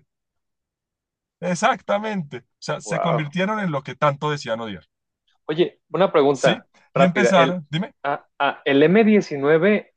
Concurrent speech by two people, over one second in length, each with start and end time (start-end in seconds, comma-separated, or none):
6.3-7.6